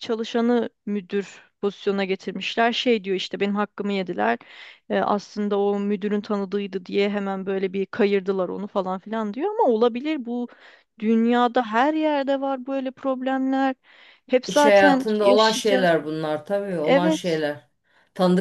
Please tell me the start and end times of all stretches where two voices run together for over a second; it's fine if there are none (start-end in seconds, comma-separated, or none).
14.5-15.9